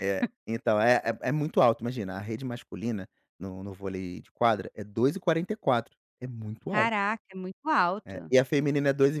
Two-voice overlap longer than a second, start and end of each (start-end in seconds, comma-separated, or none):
none